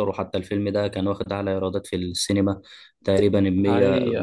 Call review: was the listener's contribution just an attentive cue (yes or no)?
yes